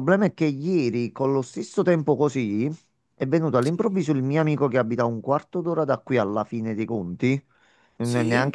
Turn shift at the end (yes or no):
no